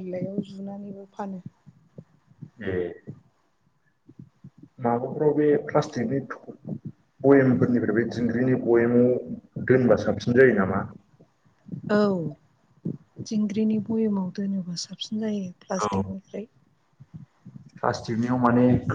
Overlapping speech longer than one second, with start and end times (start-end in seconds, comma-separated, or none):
none